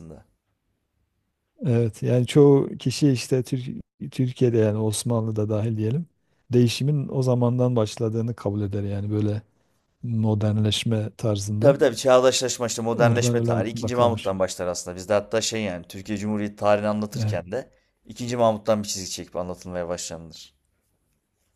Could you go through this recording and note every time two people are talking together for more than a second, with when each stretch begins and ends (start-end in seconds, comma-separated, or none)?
12.9-14.3